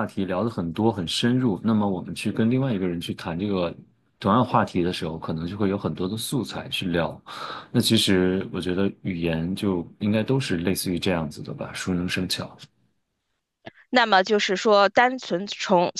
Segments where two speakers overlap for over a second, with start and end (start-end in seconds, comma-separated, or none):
none